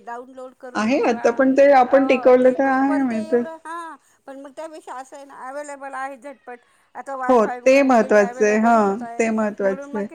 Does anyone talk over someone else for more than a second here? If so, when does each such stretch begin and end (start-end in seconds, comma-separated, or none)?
7.3-9.2